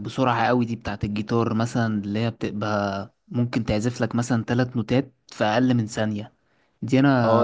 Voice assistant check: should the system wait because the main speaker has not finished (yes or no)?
no